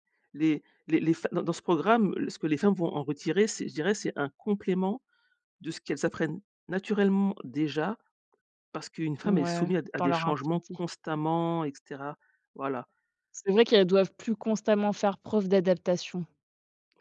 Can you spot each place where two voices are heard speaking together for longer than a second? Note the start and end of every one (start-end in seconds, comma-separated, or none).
9.2-10.8